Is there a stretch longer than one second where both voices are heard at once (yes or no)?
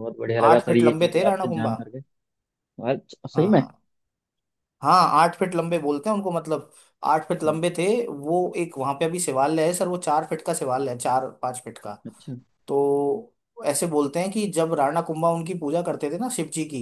yes